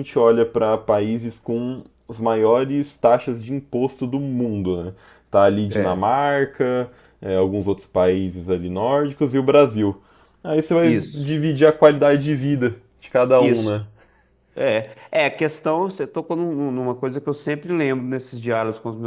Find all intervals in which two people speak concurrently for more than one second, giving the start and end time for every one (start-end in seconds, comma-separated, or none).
none